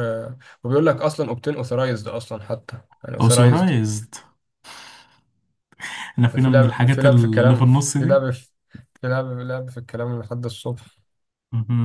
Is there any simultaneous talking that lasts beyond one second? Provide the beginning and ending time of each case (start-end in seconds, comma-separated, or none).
6.3-8.3